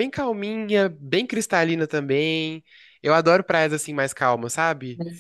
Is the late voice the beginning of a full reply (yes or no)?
no